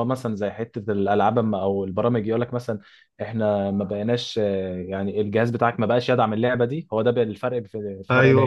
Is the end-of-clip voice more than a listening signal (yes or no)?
yes